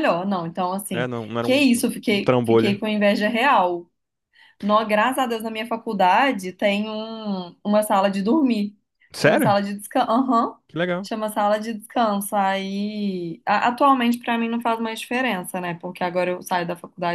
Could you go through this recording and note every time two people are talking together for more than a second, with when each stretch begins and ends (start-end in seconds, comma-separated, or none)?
0.9-2.8